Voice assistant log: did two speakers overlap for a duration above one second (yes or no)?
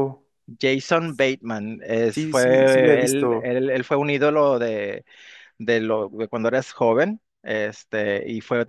yes